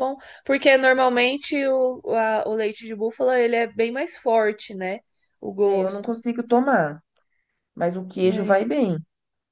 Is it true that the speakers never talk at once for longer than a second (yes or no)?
yes